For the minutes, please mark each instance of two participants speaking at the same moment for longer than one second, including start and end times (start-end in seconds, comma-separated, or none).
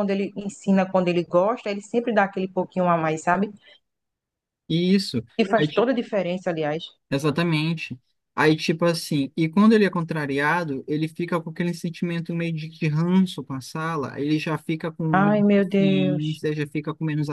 15.1-16.4